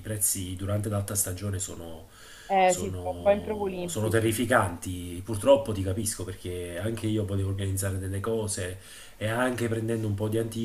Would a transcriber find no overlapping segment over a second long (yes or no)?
no